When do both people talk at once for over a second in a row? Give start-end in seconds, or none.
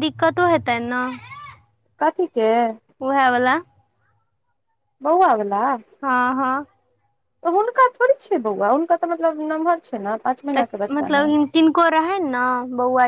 none